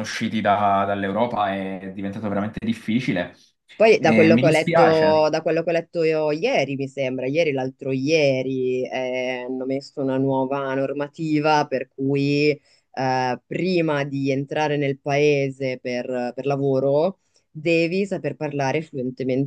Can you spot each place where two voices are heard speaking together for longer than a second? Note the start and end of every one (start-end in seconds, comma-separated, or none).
4.0-5.3